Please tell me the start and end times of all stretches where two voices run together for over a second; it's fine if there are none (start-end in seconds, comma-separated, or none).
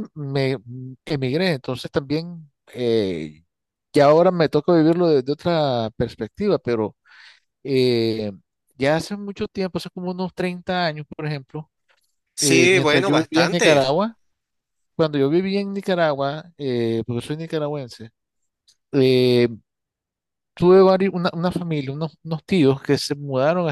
12.4-13.9